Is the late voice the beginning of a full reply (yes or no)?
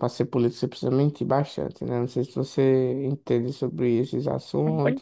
yes